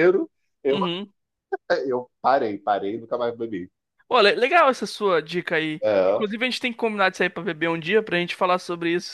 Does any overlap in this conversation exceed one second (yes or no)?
no